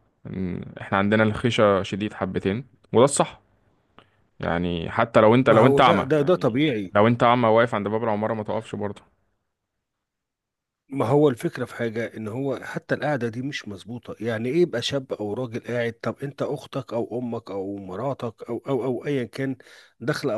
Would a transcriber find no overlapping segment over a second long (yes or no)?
yes